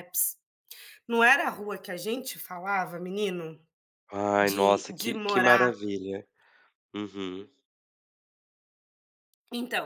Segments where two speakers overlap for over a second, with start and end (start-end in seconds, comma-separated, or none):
4.4-5.7